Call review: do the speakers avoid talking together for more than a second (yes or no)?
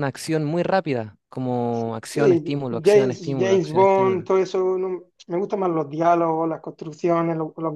no